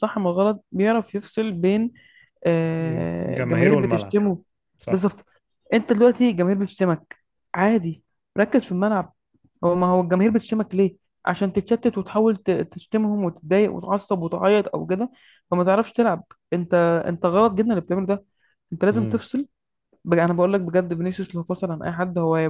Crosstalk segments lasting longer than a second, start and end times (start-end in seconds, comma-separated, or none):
2.8-4.2